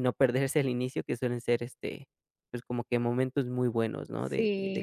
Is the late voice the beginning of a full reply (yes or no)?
yes